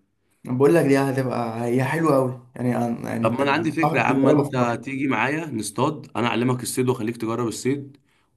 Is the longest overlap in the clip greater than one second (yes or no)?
yes